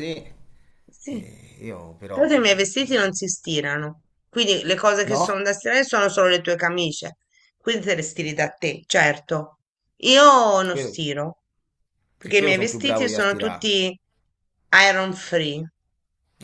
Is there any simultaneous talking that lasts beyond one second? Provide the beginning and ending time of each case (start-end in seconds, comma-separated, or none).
12.2-13.7